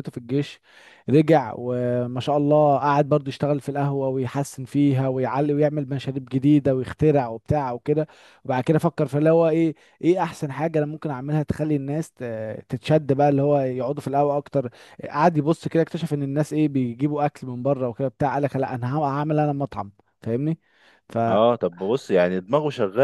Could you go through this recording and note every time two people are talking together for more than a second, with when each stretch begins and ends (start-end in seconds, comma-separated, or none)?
none